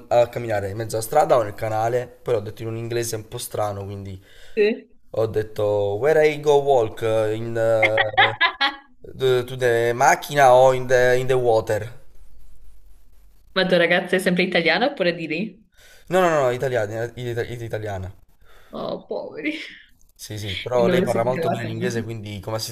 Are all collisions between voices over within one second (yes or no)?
no